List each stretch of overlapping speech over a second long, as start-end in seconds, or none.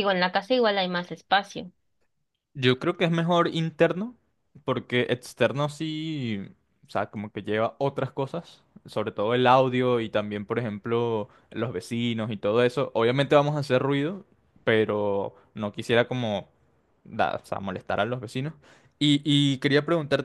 none